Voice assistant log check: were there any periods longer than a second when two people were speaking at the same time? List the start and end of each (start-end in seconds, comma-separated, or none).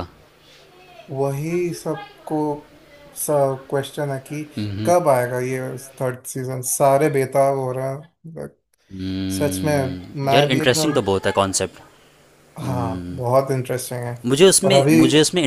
9.3-11.0